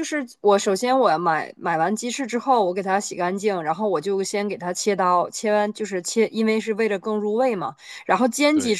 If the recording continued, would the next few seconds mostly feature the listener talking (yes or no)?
no